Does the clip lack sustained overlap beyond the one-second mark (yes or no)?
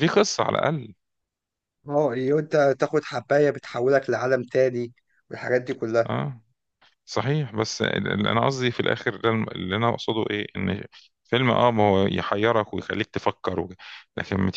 yes